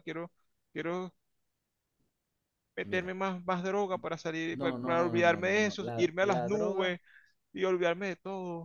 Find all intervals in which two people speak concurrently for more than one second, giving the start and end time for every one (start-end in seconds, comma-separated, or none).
4.6-7.0